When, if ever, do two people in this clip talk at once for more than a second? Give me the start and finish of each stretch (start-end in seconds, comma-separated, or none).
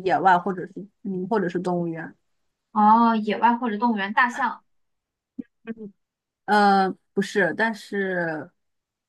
none